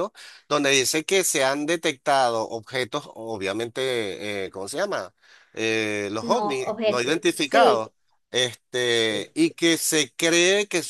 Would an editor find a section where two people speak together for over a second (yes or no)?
yes